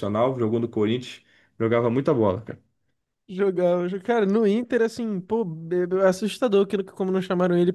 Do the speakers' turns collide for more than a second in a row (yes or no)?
no